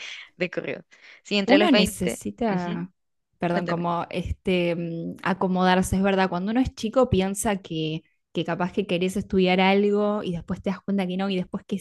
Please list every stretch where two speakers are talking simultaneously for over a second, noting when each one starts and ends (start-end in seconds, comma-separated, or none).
1.4-2.9